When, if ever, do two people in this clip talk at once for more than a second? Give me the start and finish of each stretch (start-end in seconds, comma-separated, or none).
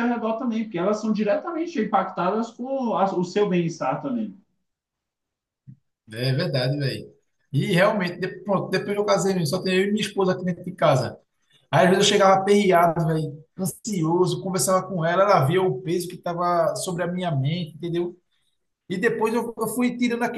none